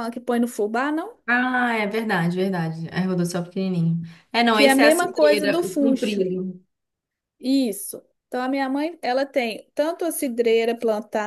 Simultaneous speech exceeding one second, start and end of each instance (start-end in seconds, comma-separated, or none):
4.5-6.3